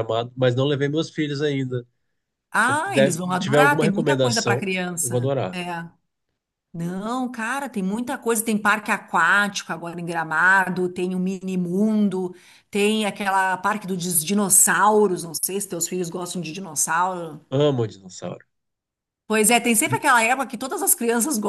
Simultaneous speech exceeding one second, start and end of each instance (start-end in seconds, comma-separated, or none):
2.6-5.6